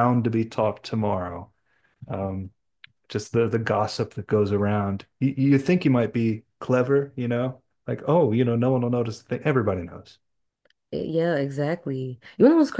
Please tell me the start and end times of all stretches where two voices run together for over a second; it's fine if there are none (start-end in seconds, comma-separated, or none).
none